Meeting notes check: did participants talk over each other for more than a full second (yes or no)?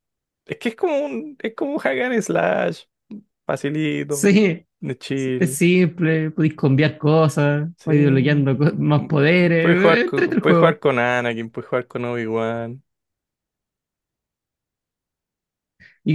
yes